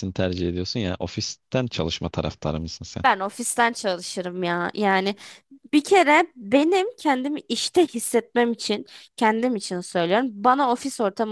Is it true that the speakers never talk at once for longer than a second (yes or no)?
yes